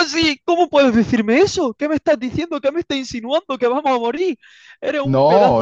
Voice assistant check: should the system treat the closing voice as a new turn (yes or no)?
yes